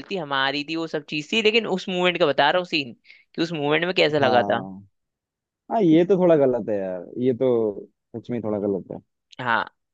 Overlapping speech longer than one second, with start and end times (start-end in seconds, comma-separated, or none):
none